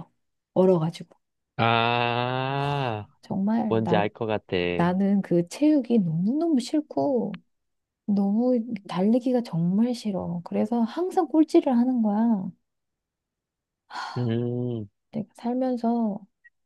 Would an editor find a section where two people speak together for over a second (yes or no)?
no